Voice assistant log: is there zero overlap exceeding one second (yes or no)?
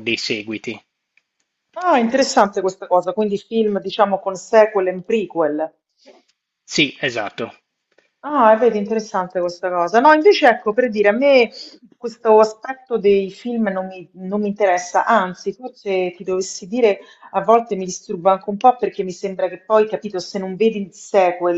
yes